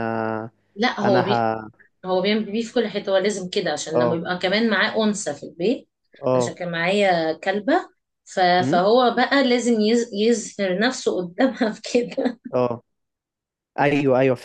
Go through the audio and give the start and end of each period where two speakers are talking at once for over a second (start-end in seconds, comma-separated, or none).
none